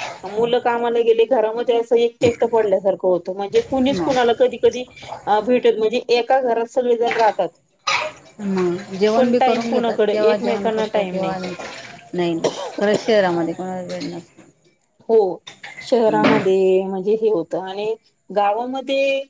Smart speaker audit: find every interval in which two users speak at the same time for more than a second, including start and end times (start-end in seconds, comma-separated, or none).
9.2-11.2